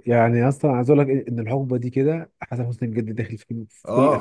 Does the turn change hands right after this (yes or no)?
yes